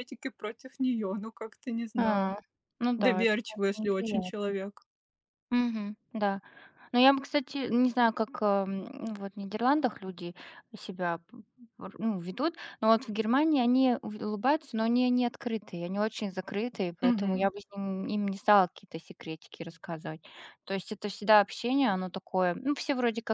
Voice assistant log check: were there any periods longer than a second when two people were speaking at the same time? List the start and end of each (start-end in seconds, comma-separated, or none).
3.0-4.5